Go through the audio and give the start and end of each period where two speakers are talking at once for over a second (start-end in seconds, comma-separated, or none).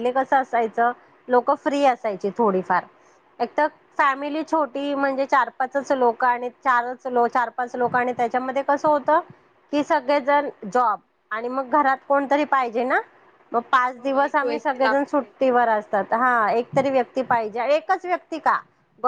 14.0-15.3